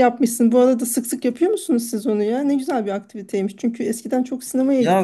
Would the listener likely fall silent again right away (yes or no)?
no